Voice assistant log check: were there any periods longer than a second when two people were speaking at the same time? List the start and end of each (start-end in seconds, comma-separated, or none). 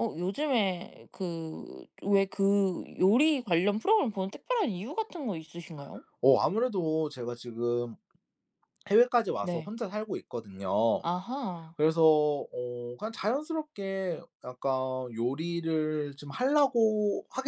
none